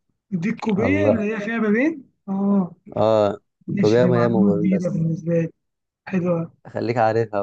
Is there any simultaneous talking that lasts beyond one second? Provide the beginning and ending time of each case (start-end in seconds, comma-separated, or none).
3.8-5.0